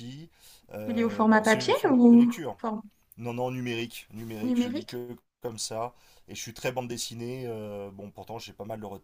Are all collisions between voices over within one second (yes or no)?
no